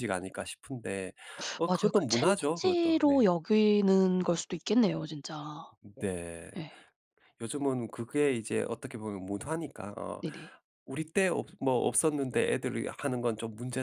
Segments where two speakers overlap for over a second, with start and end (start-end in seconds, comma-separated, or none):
1.7-3.3